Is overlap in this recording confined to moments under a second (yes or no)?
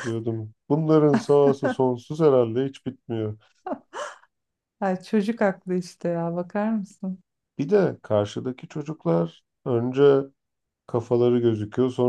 yes